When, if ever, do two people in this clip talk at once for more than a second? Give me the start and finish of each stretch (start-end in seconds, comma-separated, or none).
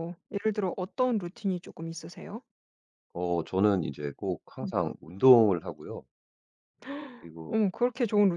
none